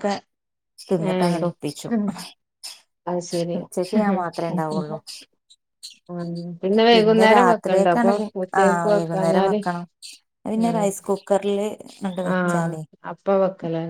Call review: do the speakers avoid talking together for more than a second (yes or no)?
no